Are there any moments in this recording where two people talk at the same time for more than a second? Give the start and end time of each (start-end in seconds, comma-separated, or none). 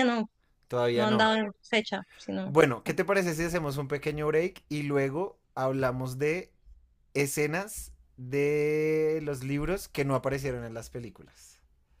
none